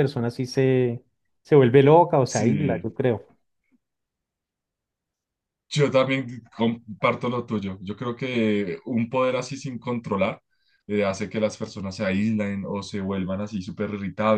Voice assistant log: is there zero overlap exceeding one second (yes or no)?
yes